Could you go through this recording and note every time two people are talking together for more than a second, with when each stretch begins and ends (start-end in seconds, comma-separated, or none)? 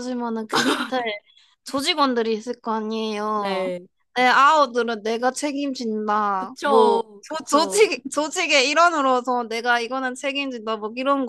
6.4-7.9